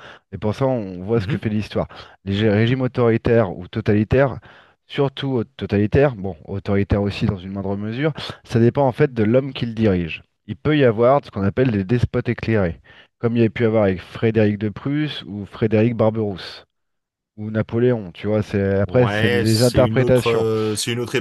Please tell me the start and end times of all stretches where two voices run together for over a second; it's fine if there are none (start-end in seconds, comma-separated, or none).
18.9-20.5